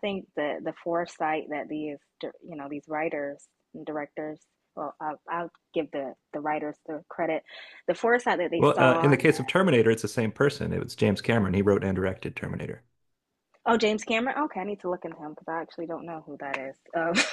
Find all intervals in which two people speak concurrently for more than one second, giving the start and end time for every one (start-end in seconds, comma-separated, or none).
none